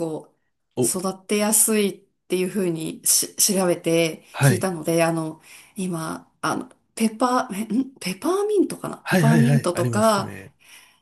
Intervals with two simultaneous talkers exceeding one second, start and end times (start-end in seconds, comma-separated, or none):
9.0-10.3